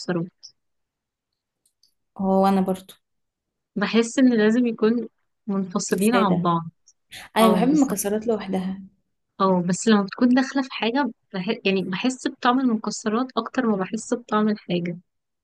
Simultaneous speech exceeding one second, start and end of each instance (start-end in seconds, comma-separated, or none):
none